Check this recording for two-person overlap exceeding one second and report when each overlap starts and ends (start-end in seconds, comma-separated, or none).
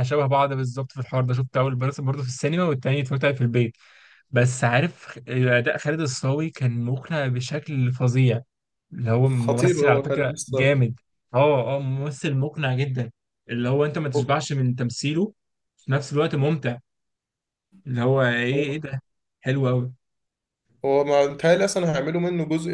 9.3-10.8